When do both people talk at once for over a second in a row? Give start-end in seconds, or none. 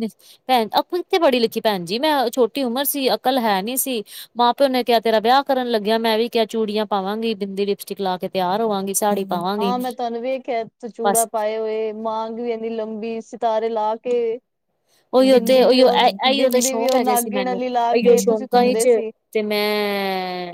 15.3-18.9